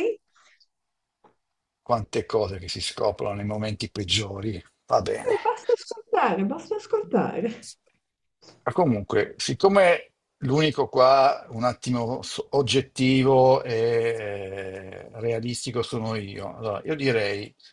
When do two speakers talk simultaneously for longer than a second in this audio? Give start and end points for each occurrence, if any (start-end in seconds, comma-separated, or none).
none